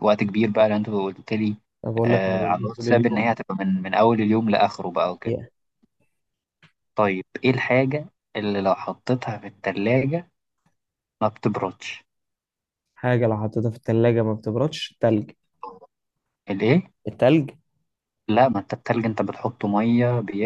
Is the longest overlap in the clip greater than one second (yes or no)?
yes